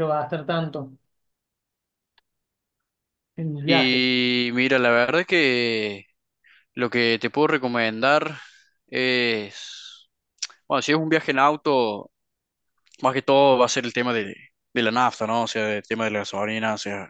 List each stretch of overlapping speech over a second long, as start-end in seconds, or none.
none